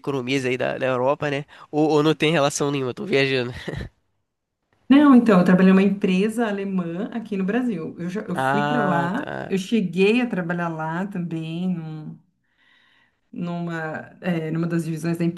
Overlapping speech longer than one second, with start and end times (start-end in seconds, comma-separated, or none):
8.3-9.6